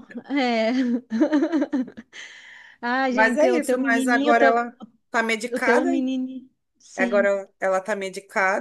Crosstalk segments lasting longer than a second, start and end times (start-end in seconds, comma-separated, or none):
3.1-4.6